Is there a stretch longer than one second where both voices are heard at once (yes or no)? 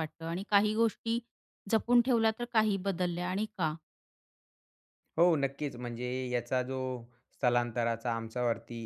no